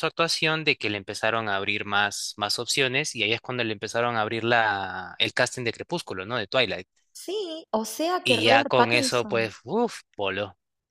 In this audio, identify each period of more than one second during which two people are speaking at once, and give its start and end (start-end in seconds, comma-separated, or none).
8.2-9.5